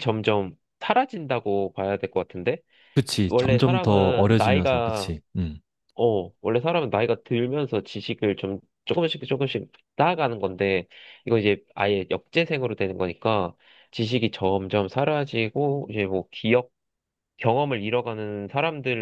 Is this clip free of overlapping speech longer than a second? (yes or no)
no